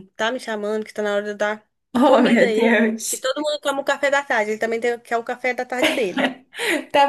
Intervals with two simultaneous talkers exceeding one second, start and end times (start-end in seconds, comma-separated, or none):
2.0-3.3